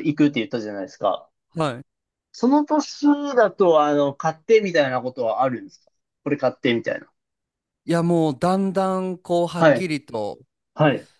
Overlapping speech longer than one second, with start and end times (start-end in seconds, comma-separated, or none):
none